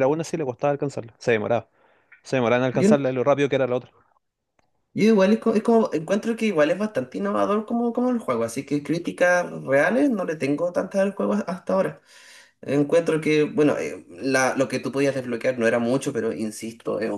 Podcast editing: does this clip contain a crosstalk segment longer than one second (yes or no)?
no